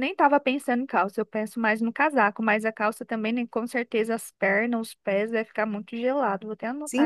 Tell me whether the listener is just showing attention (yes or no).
no